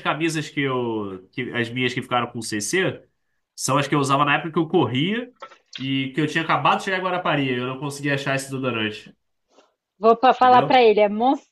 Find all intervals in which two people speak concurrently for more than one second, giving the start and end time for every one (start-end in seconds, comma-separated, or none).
none